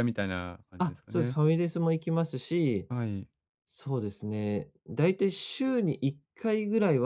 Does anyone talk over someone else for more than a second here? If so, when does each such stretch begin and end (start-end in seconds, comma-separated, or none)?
none